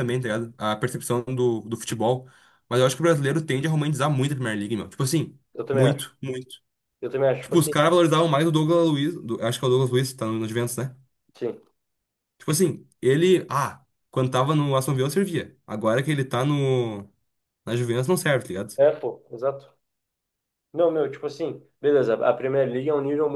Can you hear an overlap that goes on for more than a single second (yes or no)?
no